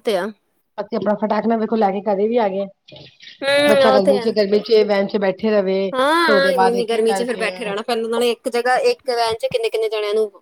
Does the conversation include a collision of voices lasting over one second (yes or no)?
yes